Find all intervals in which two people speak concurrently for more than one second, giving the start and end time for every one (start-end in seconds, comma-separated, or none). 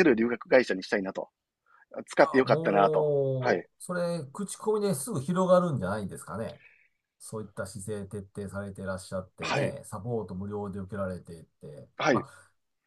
2.2-3.7